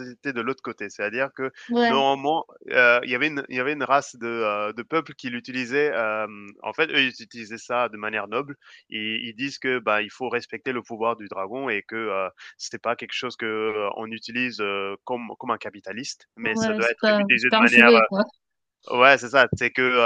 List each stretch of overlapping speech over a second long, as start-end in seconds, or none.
16.4-17.9